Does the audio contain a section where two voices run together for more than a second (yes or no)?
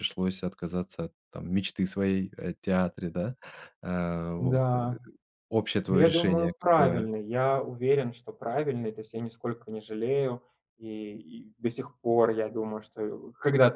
yes